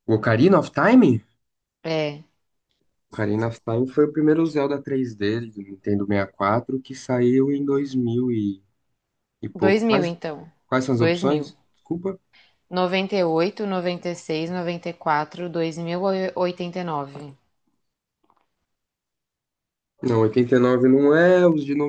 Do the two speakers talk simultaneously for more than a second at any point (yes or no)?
no